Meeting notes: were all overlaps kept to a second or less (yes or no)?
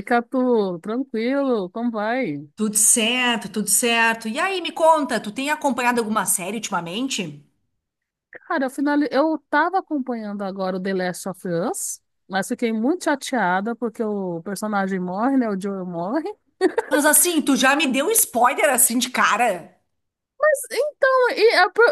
yes